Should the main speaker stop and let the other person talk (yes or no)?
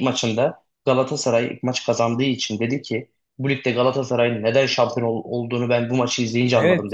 yes